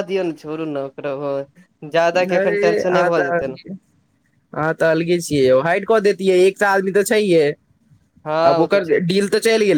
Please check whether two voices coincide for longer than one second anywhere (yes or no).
no